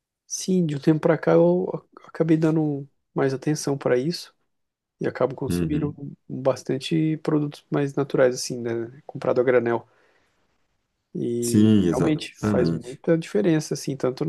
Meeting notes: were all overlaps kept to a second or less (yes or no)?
no